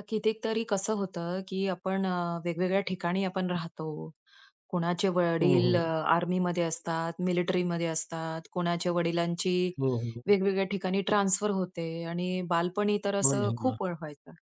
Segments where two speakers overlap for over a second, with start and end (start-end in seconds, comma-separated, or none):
none